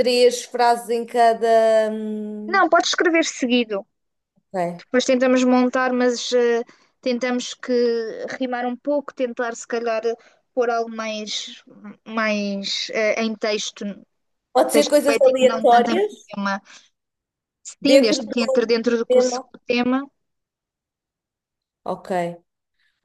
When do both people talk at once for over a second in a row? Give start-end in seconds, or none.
14.7-16.1